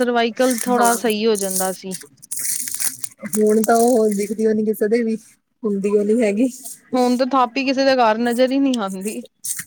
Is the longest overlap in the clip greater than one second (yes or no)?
no